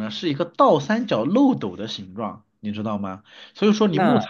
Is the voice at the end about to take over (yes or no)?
no